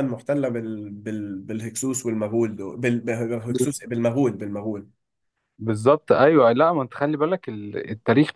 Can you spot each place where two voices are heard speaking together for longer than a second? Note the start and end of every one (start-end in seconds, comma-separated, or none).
none